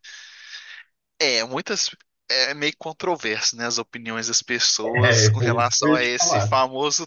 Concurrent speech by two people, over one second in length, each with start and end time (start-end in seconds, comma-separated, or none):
5.0-6.5